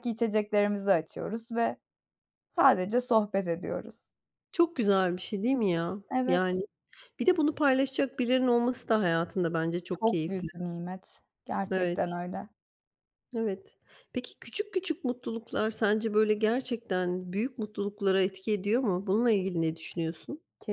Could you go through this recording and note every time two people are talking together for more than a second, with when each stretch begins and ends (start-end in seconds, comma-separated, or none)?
none